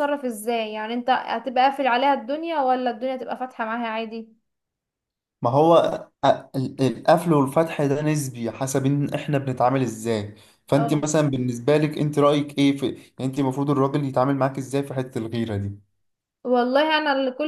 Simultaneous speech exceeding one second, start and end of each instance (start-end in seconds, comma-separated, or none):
none